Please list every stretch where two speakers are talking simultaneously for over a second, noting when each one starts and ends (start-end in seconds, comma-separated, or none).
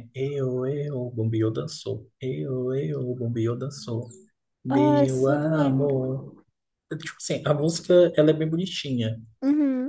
4.7-6.0